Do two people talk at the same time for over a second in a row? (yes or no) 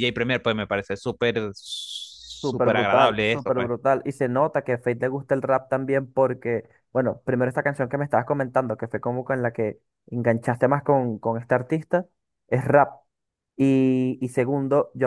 yes